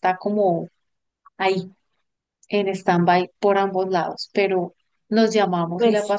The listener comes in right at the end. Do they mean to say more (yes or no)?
no